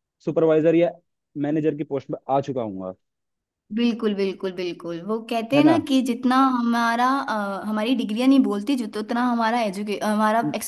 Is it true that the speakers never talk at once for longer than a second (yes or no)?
yes